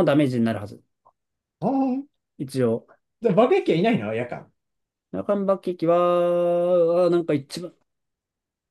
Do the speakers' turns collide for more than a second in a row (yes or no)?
no